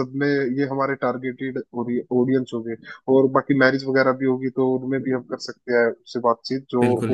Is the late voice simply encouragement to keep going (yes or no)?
no